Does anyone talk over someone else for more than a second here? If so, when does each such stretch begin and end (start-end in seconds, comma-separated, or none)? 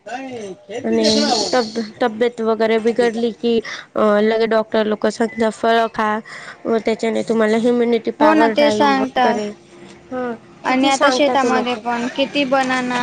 8.2-9.4